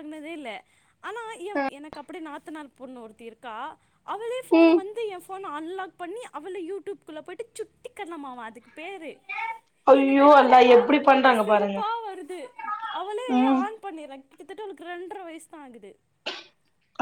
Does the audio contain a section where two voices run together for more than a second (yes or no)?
yes